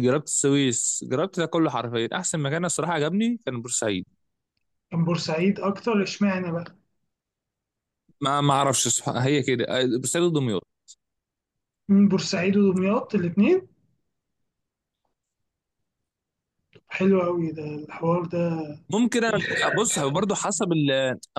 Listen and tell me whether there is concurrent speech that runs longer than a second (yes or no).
no